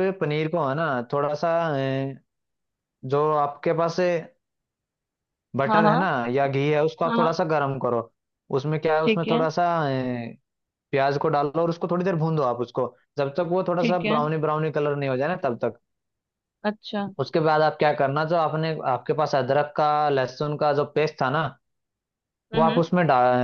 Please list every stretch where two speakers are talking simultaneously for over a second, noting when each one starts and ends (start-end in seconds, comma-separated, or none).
none